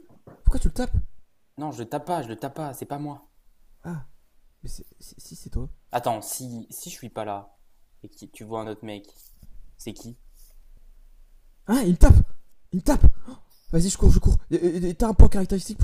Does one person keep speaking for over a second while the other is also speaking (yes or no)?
no